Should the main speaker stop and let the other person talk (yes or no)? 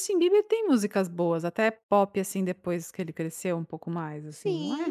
yes